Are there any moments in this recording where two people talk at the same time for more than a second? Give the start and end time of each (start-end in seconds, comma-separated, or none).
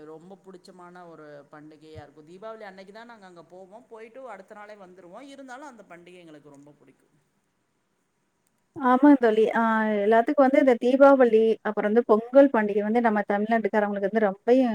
none